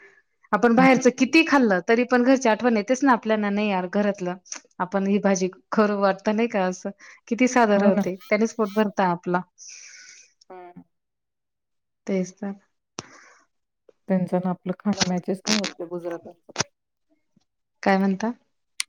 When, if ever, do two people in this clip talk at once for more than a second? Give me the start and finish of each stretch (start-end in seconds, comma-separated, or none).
none